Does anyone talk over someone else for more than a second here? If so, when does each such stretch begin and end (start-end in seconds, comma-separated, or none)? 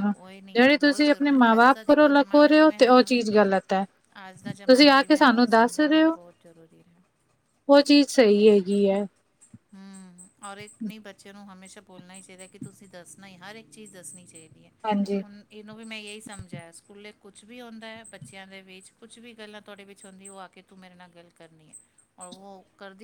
0.6-2.1